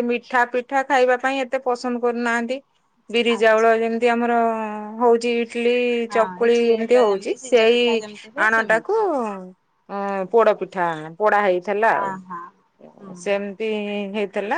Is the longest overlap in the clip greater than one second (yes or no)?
yes